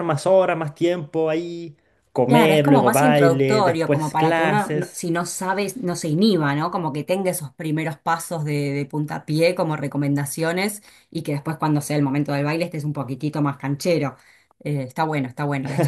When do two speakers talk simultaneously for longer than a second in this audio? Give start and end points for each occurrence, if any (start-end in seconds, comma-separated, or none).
2.3-5.0